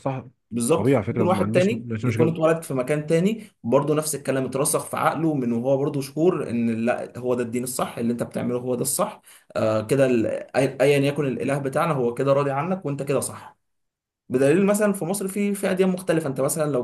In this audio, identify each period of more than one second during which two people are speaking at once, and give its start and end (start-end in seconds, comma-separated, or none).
0.8-2.4